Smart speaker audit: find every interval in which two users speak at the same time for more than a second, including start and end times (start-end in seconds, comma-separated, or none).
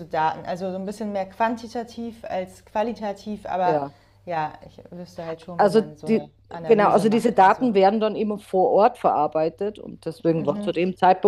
5.6-7.7